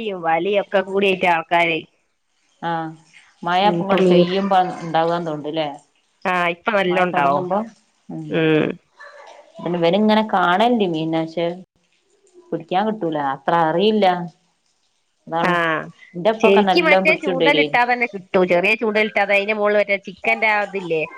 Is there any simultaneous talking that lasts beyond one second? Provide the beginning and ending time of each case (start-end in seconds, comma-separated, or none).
16.4-17.8